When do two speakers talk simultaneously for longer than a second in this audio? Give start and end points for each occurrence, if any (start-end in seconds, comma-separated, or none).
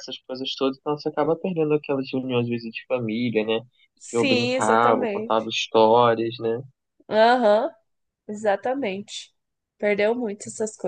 4.1-5.5